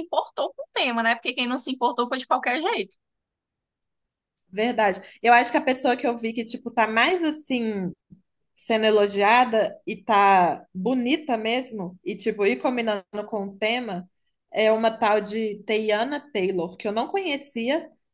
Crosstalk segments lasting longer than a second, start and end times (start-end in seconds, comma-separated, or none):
none